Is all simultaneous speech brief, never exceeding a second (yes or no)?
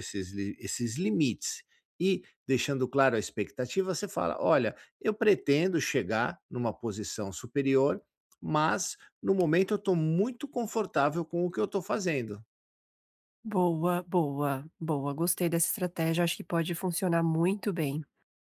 yes